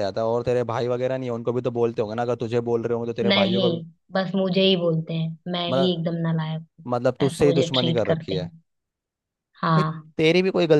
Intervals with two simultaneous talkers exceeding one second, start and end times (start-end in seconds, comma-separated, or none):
7.3-8.5